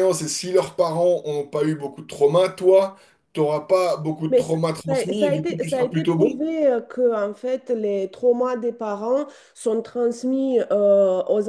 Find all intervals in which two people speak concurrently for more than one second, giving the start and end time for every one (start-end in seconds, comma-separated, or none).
4.3-6.5